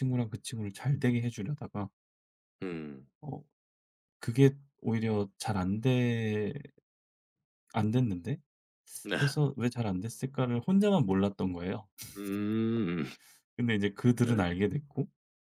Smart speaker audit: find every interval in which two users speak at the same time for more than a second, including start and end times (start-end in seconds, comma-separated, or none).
none